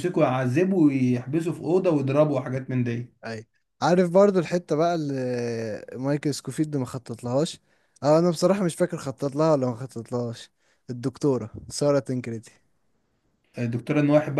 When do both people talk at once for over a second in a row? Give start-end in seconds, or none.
none